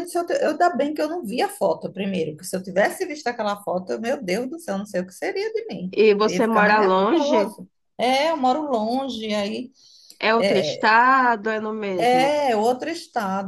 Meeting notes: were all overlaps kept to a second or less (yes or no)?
no